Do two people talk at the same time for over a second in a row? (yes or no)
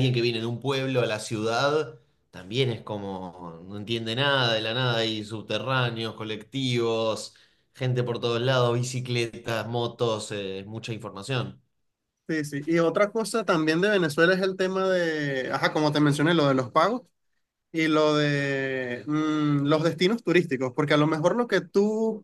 no